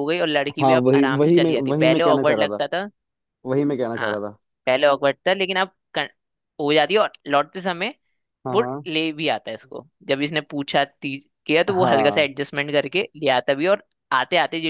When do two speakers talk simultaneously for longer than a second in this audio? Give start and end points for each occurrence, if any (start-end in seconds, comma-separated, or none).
0.6-2.6